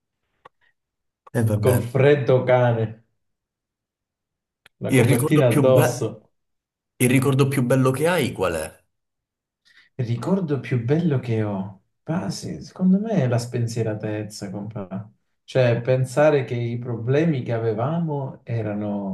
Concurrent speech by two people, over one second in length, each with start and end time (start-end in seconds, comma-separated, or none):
4.8-6.1